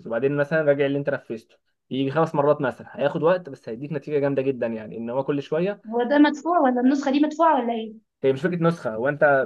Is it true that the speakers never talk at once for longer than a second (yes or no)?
yes